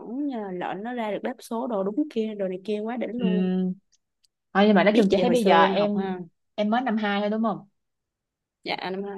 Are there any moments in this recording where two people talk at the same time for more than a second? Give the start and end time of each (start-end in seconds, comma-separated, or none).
4.9-6.2